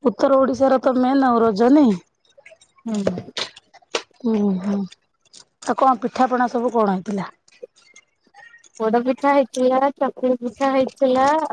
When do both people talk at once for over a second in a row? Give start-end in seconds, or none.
none